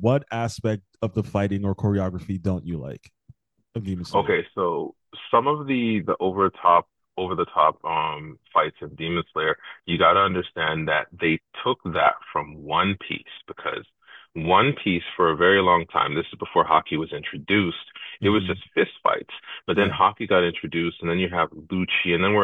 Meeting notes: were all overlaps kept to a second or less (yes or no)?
yes